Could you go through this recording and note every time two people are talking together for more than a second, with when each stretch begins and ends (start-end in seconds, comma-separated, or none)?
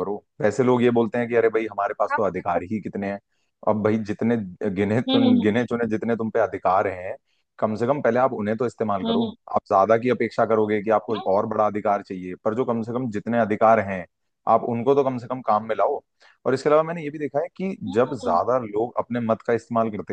none